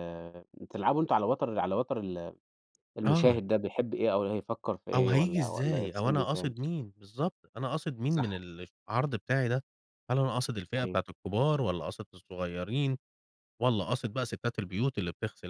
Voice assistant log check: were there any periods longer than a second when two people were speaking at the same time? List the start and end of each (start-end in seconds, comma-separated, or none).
4.9-6.5